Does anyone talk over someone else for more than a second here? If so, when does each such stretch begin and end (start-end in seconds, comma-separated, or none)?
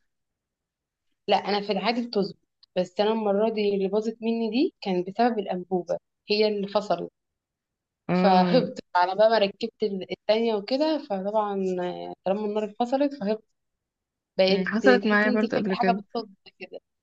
14.5-16.0